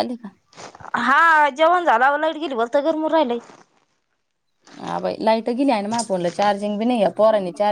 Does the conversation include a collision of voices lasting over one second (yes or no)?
no